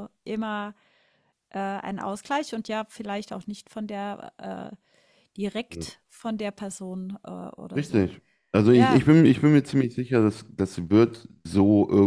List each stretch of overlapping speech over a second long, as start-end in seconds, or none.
none